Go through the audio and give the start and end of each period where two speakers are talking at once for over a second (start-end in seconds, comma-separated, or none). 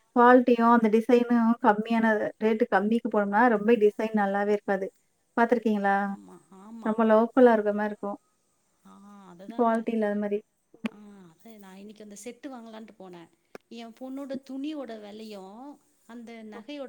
none